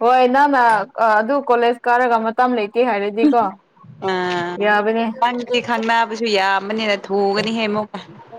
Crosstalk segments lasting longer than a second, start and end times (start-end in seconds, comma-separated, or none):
none